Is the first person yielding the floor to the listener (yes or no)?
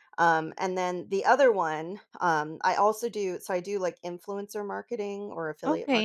yes